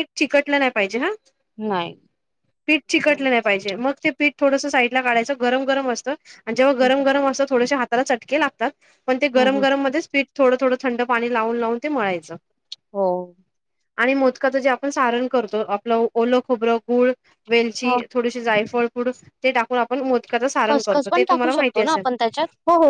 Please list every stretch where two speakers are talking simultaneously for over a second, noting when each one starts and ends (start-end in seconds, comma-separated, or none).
20.7-22.0